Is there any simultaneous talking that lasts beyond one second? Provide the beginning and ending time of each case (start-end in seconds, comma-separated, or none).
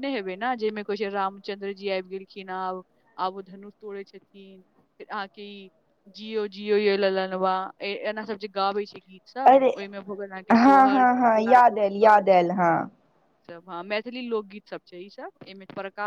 10.6-12.4